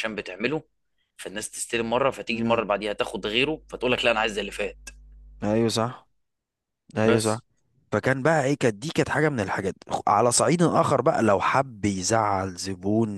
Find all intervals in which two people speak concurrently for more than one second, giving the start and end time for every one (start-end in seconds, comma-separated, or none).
none